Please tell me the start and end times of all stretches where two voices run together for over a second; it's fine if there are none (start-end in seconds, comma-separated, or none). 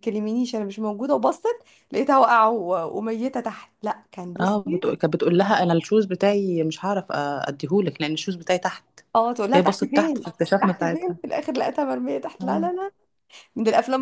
9.5-11.2